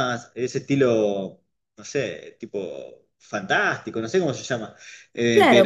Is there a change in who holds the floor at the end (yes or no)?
yes